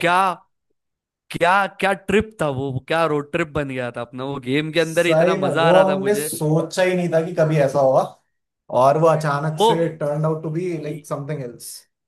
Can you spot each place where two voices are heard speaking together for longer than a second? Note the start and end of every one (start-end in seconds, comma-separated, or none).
4.8-6.3